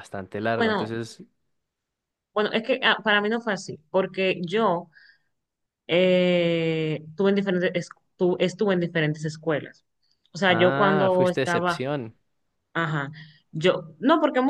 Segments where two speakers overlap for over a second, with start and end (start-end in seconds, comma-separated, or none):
10.5-11.8